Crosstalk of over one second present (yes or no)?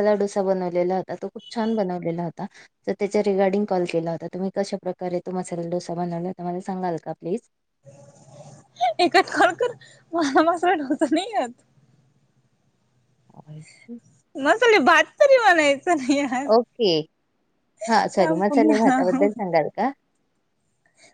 yes